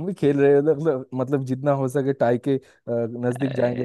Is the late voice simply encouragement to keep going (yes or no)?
no